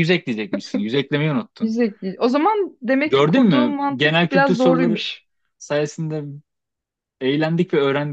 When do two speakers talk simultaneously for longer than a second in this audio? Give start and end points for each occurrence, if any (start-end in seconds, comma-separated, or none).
3.0-5.0